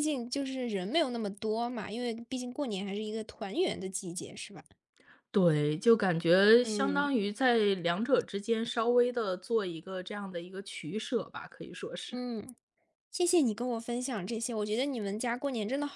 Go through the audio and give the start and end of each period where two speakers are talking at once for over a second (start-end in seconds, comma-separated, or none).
none